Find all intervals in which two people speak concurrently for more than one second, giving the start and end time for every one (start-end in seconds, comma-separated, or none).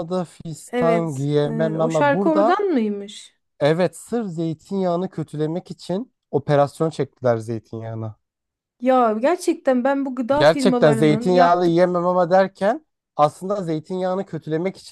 0.7-2.6, 10.3-11.9